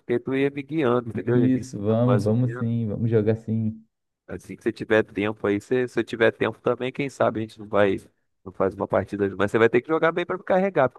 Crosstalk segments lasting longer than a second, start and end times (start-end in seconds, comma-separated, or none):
1.3-2.7